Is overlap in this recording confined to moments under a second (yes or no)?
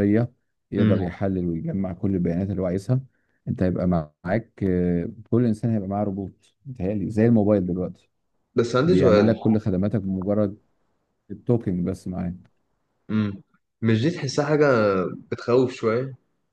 yes